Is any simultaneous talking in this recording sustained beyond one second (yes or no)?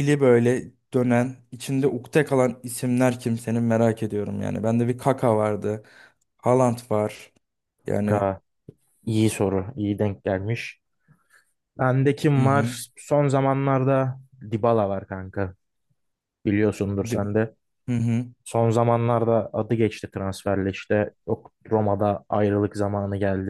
no